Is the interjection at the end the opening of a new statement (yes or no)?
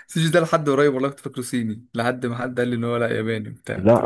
yes